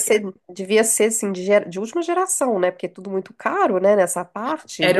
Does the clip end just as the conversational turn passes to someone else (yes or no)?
yes